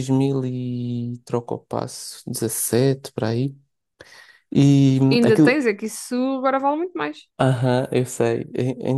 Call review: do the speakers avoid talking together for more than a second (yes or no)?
yes